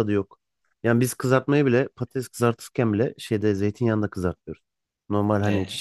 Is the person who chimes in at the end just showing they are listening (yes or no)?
yes